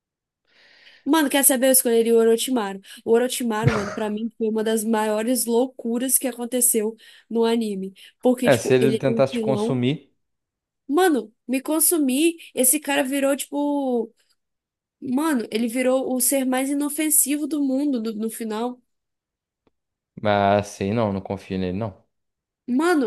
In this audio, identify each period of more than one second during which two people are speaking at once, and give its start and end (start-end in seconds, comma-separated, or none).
8.4-9.8